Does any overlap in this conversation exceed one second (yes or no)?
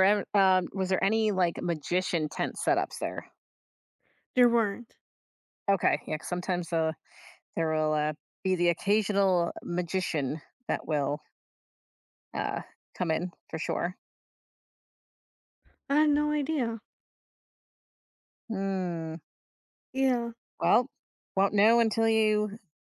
no